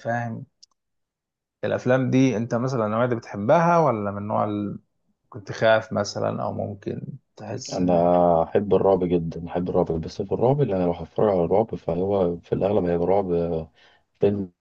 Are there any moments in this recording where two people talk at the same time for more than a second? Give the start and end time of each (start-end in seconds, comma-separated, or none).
none